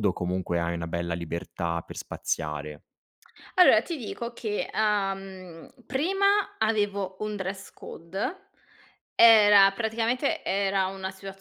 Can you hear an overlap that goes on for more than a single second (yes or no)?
no